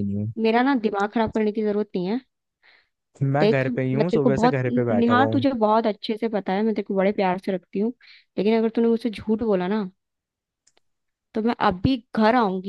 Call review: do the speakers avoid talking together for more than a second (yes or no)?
no